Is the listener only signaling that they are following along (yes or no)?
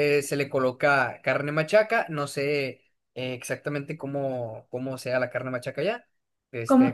no